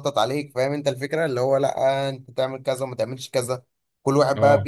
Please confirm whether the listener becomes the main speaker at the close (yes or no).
no